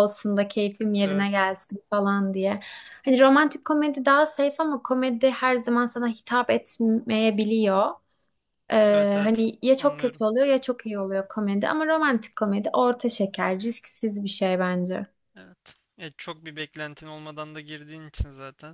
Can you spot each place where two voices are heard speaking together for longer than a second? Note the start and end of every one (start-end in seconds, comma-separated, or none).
8.9-10.2